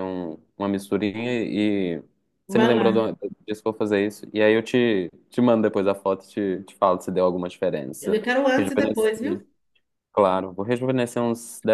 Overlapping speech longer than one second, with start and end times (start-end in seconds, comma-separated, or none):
8.0-9.4